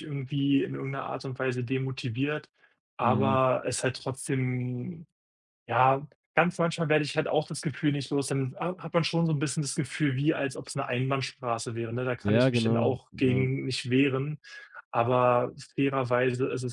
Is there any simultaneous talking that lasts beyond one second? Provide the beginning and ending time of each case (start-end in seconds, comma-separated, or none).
12.2-13.5